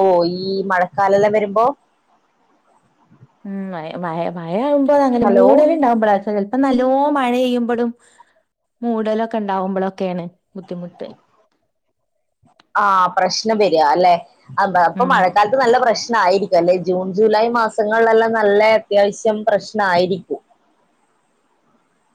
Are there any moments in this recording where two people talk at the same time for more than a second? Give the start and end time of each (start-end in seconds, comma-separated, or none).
none